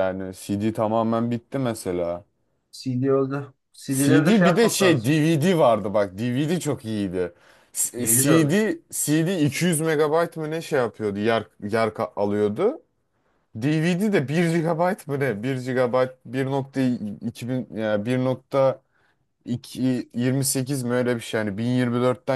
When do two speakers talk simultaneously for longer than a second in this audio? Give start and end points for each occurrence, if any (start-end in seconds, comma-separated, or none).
3.9-5.1